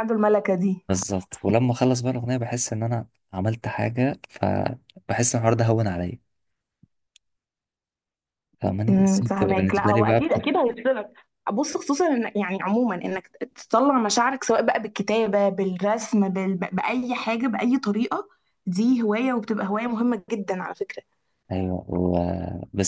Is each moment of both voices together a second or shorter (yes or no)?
no